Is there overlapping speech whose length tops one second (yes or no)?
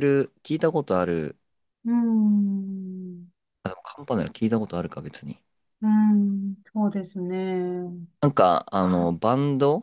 no